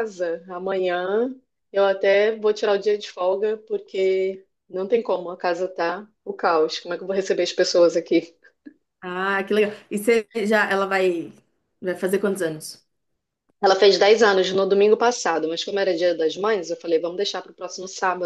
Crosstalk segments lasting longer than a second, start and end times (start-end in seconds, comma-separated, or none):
none